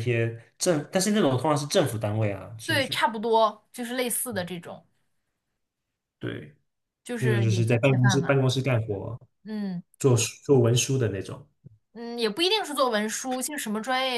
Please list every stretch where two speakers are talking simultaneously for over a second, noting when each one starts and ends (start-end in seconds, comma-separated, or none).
7.2-8.4